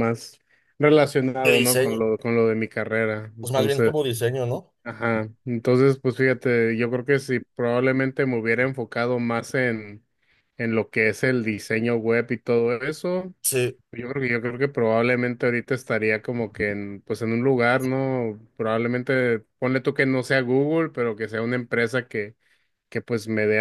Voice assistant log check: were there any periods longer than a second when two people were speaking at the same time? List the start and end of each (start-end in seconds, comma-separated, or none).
none